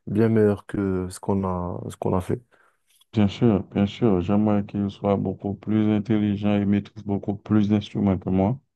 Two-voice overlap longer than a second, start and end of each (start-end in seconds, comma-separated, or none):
none